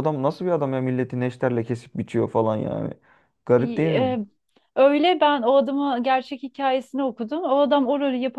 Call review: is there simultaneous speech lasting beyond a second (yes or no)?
no